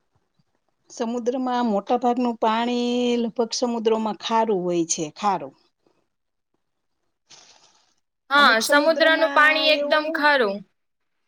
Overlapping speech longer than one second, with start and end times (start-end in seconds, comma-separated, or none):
8.4-10.0